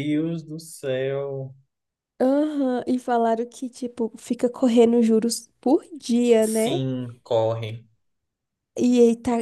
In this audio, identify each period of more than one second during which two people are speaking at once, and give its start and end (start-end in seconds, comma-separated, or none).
none